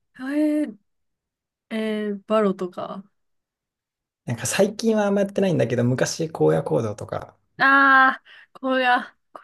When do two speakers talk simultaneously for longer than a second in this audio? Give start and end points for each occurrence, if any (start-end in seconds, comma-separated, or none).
none